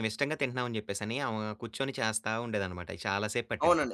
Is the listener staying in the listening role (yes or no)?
no